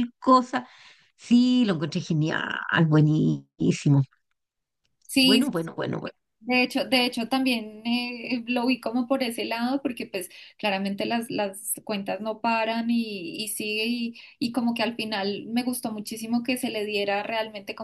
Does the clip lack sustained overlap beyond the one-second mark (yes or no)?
yes